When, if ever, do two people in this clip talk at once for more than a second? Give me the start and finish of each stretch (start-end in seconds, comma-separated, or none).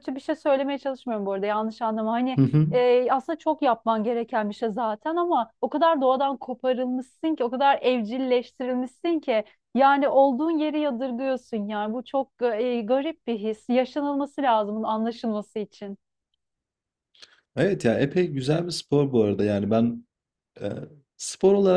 none